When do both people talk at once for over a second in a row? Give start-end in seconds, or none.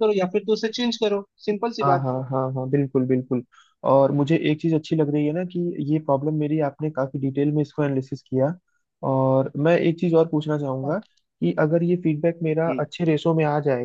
none